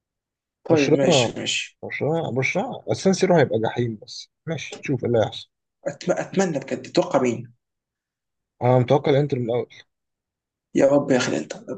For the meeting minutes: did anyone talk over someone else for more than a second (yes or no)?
no